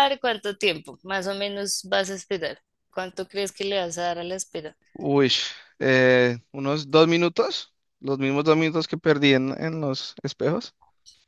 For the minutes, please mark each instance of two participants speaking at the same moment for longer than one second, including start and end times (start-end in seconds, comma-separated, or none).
none